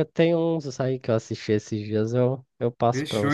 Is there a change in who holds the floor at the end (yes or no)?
yes